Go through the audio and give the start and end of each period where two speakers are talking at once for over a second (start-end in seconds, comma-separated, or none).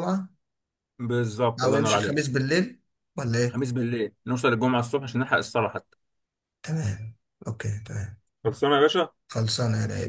none